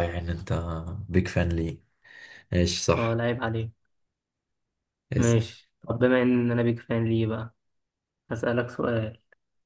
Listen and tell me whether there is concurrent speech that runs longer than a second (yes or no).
no